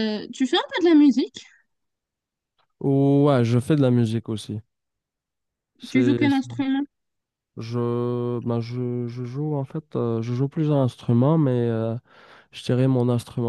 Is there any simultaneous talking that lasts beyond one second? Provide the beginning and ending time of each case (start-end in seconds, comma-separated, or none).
none